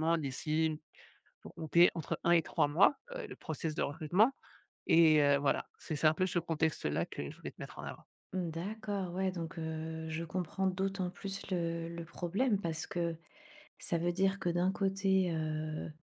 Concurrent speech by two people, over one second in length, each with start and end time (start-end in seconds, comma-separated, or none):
none